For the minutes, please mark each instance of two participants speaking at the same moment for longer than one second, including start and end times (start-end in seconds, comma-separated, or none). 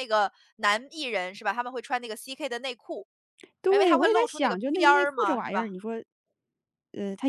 3.7-5.7